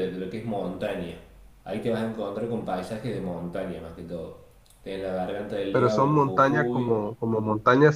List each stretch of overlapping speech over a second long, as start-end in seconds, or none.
5.7-7.0